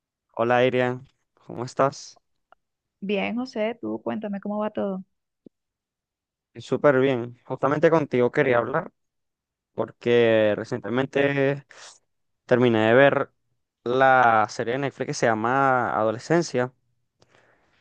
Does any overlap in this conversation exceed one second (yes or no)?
no